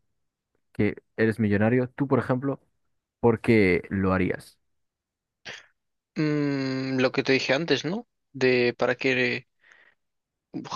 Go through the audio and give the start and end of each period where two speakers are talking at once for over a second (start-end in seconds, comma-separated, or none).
none